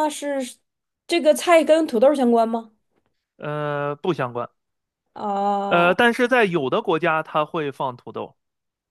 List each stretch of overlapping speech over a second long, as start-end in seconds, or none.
none